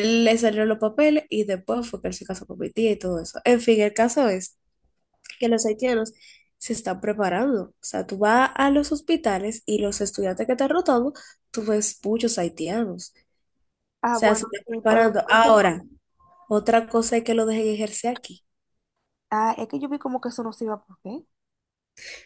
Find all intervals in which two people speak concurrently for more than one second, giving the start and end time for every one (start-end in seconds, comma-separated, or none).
14.0-15.5